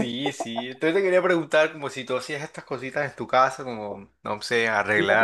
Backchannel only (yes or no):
yes